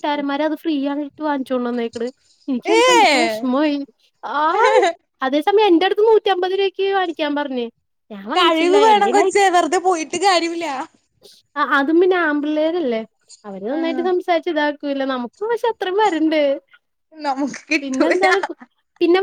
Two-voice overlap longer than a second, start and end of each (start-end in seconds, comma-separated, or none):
none